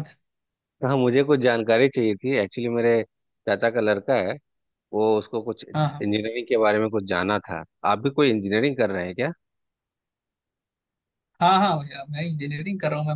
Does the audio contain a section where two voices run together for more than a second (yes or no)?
no